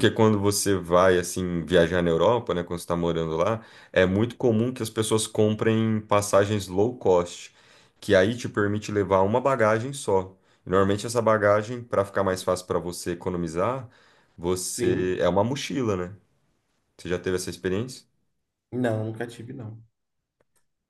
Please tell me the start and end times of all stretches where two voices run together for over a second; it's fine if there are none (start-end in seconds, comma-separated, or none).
none